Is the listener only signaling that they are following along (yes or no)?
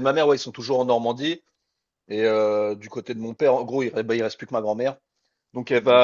yes